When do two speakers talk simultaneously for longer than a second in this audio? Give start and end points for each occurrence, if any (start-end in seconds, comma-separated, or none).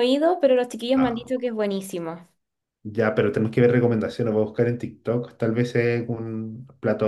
none